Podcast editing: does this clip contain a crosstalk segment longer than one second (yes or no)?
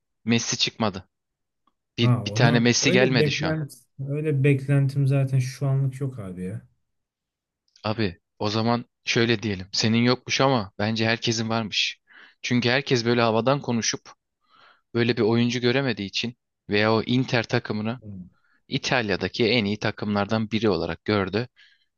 yes